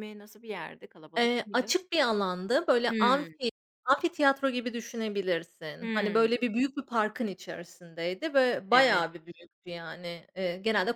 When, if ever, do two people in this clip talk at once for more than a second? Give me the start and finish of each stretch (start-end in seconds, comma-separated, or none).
none